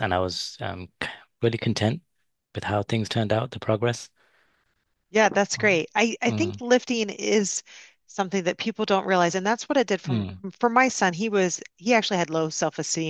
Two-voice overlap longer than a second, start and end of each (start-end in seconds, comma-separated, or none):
none